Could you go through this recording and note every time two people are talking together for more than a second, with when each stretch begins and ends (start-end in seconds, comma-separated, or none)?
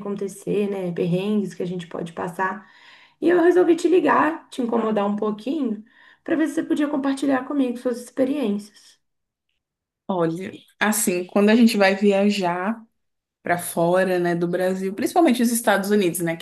none